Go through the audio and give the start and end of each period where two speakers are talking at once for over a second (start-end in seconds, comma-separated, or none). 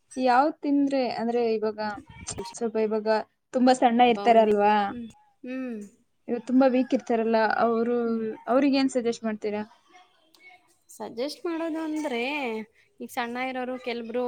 none